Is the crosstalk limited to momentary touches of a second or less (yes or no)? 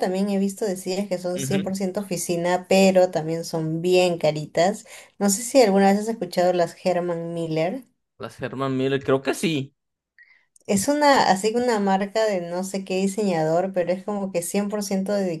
yes